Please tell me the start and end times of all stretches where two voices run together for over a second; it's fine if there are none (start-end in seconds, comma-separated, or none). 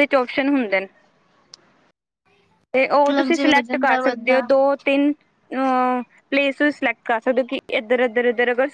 2.9-4.5